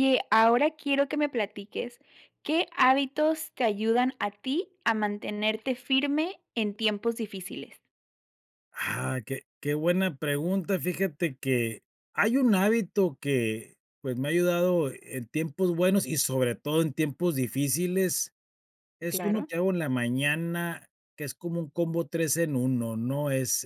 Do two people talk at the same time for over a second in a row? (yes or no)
no